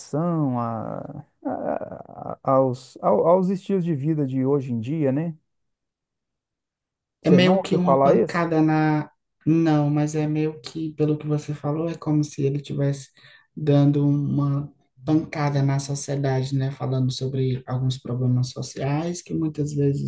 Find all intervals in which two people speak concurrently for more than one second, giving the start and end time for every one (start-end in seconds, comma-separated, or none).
7.2-8.4